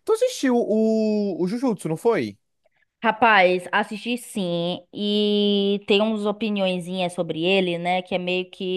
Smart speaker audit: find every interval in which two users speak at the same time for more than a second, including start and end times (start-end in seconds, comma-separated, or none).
none